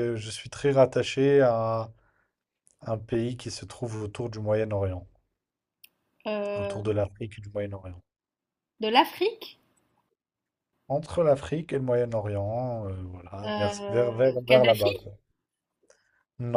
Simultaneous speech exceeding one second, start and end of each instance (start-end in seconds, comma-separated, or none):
13.4-15.1